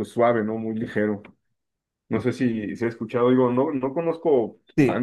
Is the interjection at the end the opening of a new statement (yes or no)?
no